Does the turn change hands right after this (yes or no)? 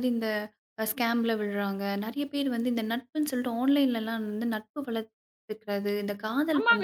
yes